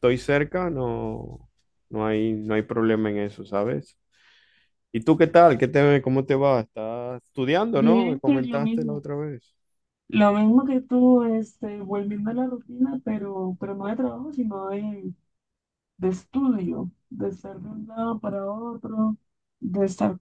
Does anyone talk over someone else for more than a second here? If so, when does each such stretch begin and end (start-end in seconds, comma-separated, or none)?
7.7-9.1